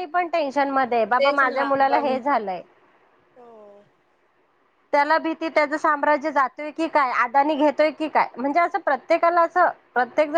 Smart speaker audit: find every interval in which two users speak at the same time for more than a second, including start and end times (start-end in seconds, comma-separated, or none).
0.5-2.1